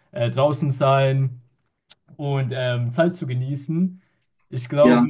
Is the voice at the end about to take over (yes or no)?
no